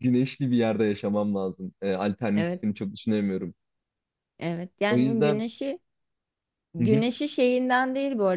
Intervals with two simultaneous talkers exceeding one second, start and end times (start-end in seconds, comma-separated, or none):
none